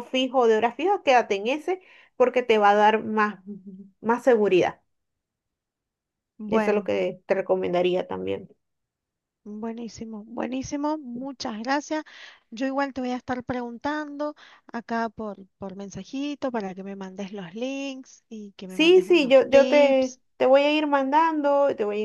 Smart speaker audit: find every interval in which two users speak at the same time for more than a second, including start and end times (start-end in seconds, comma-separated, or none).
18.7-20.2